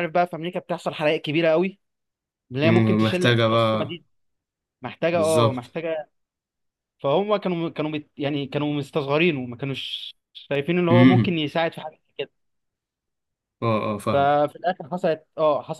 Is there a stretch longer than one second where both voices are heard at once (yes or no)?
yes